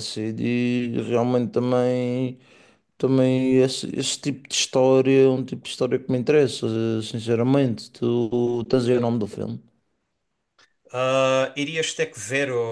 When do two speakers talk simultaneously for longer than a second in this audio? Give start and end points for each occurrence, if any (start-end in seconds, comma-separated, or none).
none